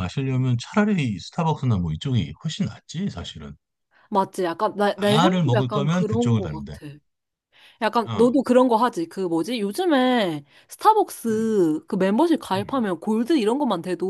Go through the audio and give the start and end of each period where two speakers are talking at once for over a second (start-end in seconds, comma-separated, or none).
5.0-6.7